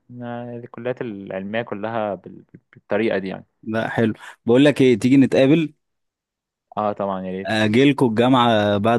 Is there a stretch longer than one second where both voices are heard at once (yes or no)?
no